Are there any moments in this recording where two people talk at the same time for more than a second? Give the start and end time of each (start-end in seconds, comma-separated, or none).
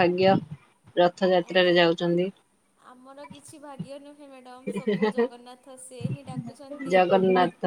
none